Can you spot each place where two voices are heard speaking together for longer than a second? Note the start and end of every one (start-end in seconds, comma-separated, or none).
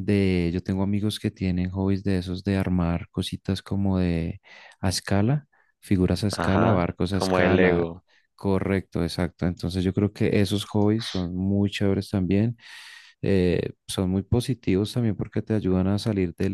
6.3-7.9